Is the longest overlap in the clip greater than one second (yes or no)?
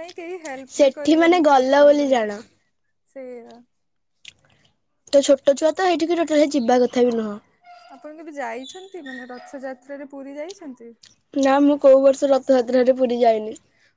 yes